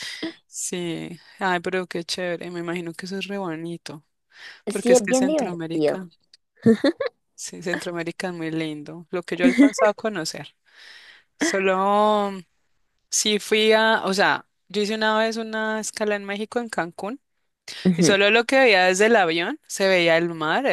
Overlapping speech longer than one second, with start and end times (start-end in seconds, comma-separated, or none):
4.7-6.0